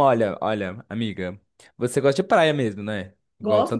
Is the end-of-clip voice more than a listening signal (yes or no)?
yes